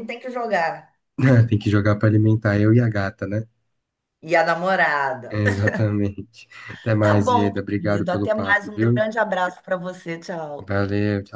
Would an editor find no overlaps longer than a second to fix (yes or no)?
no